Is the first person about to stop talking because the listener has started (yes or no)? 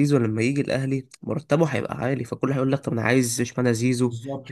yes